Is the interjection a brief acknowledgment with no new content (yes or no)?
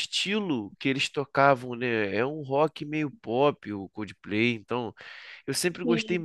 yes